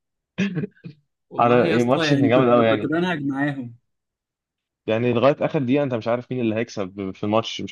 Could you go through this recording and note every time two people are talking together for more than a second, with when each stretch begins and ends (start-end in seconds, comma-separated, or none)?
1.4-2.9